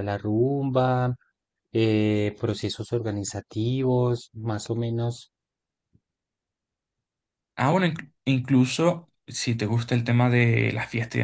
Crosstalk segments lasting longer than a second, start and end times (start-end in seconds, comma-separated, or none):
none